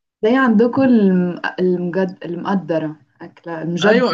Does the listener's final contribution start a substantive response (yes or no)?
yes